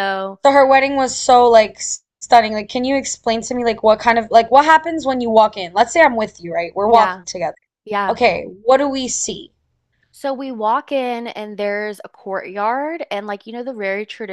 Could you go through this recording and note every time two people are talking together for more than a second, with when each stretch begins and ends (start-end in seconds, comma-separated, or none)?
none